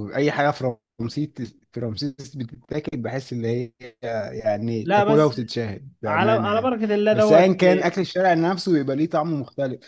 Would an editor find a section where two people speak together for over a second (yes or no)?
yes